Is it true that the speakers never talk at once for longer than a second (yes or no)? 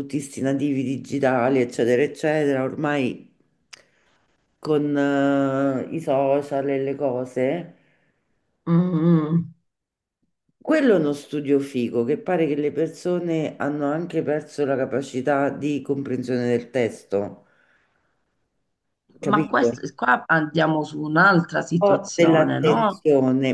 no